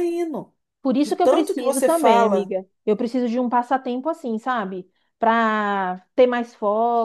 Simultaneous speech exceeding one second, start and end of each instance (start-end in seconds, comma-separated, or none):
1.0-2.5